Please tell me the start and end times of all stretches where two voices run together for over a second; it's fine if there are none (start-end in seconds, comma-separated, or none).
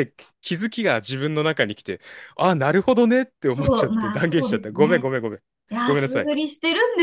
3.5-5.1